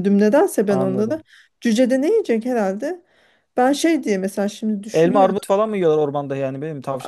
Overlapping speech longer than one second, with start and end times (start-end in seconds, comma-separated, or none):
none